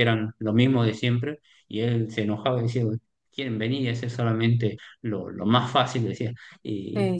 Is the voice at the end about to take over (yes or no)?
no